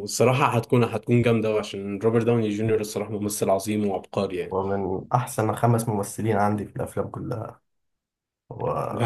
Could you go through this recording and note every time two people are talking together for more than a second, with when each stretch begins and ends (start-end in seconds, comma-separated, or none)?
none